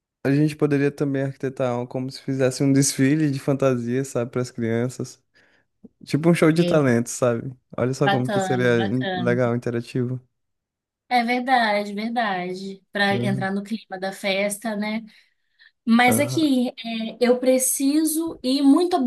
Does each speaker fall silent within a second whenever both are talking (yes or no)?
no